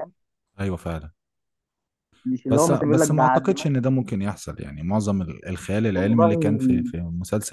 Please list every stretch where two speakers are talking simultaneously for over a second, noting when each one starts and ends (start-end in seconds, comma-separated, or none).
2.5-3.9